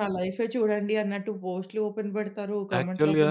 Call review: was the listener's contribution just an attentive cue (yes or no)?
no